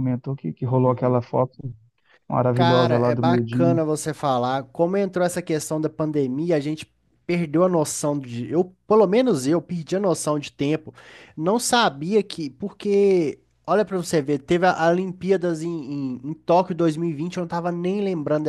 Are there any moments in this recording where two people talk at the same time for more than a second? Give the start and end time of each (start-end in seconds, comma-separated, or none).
2.5-3.8